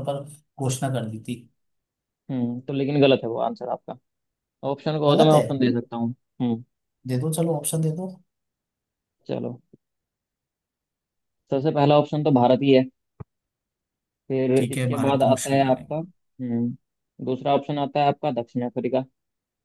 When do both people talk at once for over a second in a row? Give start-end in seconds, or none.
14.6-16.1